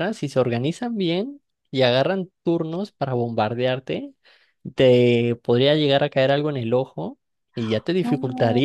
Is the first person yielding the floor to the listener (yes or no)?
no